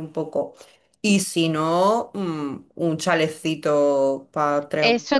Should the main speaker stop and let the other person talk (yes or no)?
yes